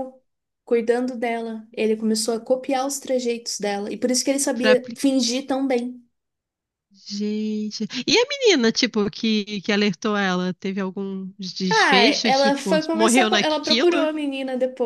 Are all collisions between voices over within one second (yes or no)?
no